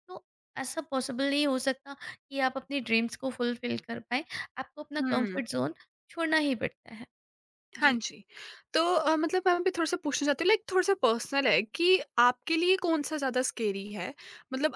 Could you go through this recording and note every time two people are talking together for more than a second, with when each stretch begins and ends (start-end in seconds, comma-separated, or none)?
none